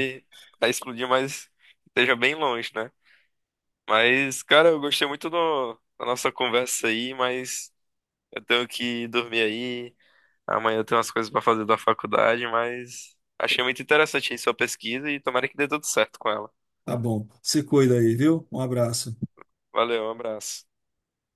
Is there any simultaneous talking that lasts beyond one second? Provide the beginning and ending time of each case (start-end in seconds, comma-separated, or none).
none